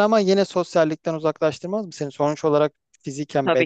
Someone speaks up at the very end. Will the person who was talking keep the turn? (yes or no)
no